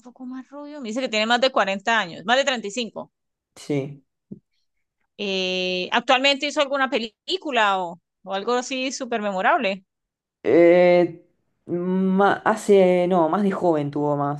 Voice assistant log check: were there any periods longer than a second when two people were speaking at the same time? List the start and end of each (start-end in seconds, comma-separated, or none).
none